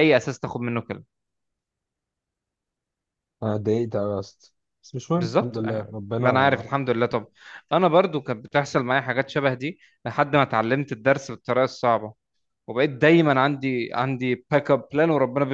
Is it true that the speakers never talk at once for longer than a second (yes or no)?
no